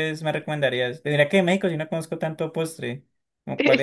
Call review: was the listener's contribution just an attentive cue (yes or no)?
no